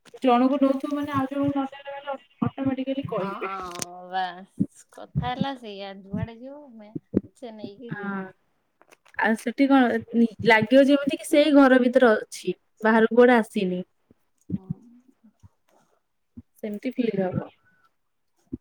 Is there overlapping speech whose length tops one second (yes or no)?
no